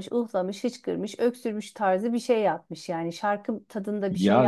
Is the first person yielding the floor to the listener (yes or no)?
yes